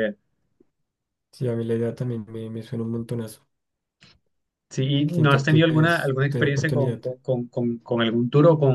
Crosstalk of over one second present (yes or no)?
yes